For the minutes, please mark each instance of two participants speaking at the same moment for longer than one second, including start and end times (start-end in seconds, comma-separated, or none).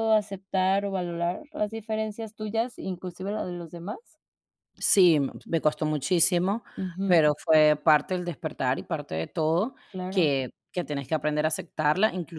none